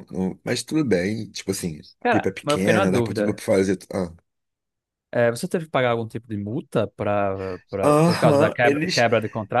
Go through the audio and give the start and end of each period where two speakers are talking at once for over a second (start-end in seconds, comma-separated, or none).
2.0-3.4, 7.8-9.1